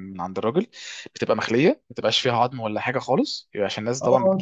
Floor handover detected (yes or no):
yes